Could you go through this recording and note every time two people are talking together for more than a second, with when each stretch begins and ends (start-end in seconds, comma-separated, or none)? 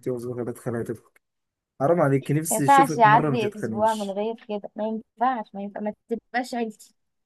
2.5-4.2